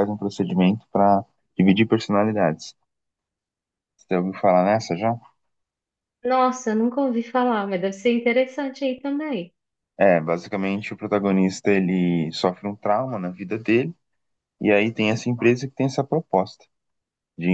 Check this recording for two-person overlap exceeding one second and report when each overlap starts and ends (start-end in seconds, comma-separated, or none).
none